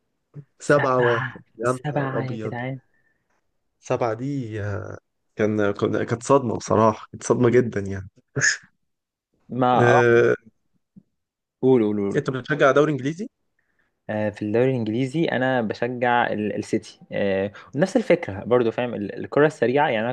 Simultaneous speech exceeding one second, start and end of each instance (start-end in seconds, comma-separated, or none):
0.6-2.5